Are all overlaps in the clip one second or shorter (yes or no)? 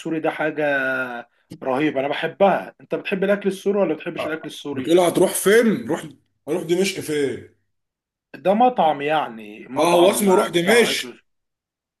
no